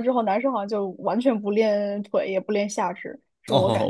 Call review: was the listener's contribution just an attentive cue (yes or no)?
no